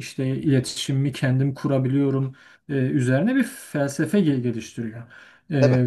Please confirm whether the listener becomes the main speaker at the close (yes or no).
no